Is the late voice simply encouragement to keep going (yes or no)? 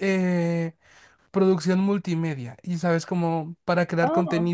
yes